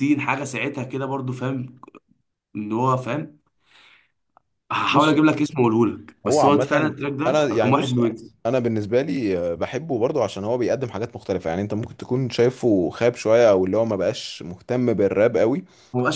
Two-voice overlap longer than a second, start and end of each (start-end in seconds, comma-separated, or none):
6.2-7.9